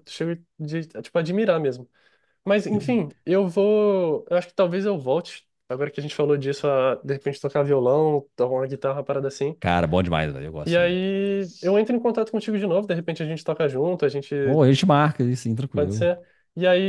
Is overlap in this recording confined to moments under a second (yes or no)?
yes